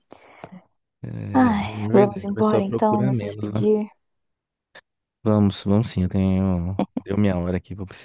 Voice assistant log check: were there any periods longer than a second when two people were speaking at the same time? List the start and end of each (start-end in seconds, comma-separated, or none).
1.5-3.6